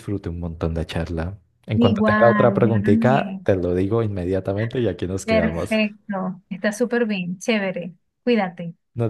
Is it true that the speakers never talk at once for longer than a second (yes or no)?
no